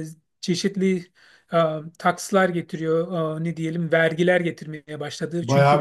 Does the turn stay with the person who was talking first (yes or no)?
no